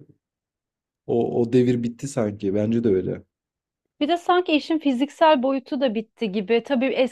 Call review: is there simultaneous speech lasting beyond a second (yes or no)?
no